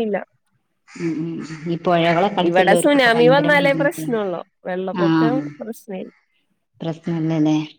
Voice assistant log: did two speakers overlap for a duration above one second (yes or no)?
yes